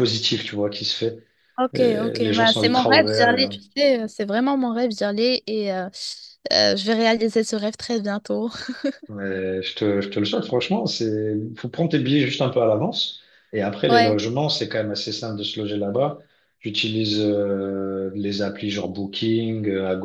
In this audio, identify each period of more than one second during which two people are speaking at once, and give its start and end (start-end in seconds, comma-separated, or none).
1.7-3.5